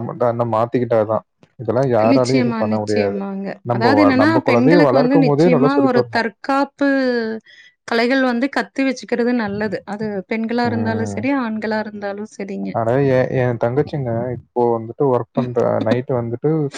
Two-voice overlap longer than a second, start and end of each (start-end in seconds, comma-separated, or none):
3.7-6.3